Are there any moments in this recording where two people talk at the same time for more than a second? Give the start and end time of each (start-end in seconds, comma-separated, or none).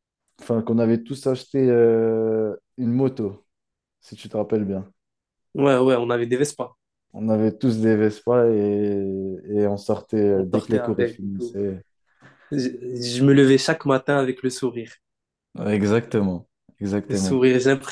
10.3-11.6